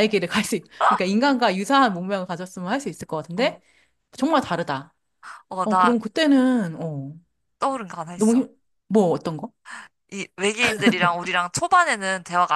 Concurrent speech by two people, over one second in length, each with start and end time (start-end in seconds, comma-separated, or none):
none